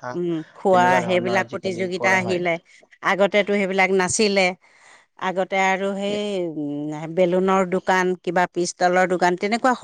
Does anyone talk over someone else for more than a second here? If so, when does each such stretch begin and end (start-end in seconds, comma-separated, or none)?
0.7-2.4